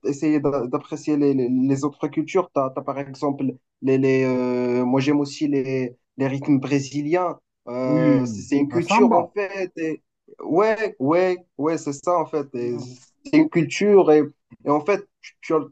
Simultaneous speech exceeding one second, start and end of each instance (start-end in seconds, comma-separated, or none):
7.8-9.3